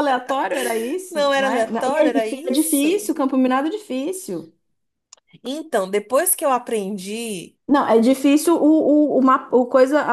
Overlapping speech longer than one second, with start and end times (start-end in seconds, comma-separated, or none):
1.1-3.1